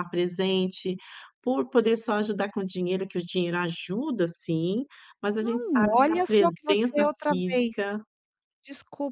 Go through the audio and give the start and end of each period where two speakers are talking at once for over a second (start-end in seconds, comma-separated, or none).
5.4-7.8